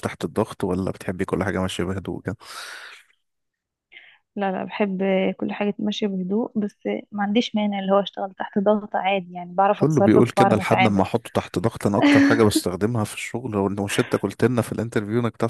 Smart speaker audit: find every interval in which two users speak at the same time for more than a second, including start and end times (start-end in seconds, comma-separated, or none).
9.7-11.1